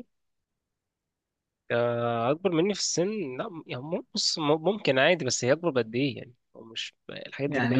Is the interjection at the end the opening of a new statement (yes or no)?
yes